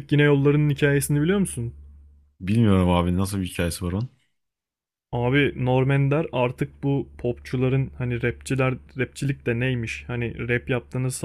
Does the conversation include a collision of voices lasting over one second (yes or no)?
no